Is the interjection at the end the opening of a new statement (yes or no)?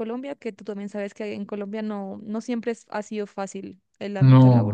yes